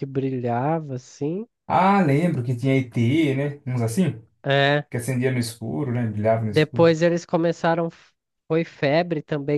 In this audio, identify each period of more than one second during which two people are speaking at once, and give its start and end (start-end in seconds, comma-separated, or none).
none